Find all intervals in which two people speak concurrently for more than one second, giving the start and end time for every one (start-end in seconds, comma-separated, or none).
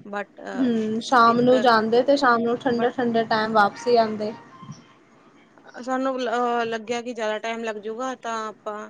none